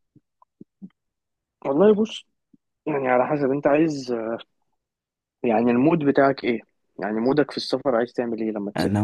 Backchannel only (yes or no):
no